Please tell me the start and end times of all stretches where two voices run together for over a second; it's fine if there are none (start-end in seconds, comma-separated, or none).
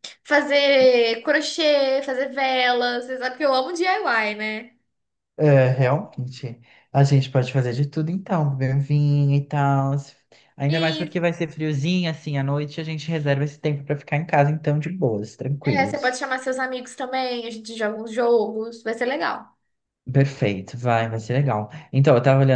none